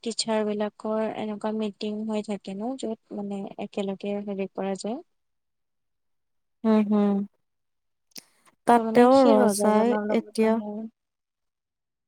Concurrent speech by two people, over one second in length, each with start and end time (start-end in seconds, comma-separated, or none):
8.8-10.5